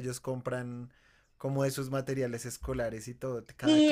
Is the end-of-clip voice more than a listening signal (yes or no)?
yes